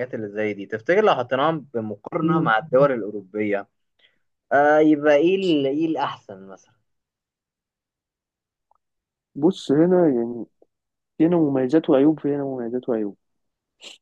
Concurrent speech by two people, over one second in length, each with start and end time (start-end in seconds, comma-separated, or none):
none